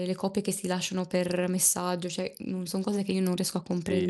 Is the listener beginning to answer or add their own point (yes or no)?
yes